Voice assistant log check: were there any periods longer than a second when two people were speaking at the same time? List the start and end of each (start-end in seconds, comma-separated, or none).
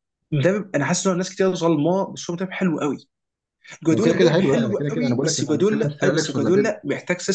3.9-6.7